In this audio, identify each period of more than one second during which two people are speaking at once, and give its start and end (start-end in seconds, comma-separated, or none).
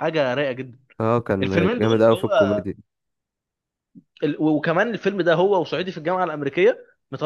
1.4-2.6